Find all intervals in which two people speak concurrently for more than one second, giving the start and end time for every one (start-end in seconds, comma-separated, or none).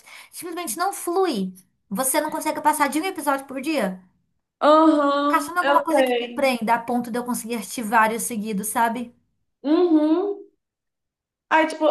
5.3-6.5